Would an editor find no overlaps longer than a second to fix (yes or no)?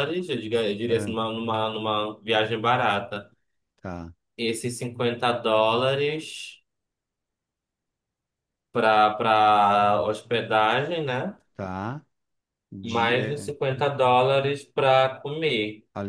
yes